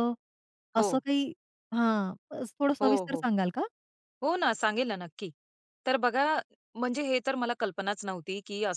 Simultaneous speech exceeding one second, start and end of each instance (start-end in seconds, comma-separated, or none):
none